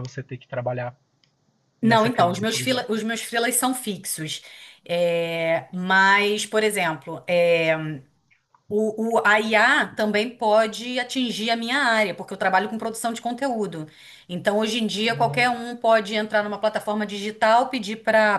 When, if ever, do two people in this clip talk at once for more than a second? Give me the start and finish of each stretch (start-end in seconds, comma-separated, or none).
1.8-3.0